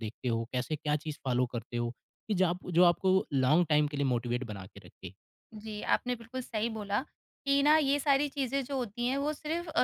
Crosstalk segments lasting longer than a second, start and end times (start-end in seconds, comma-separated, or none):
none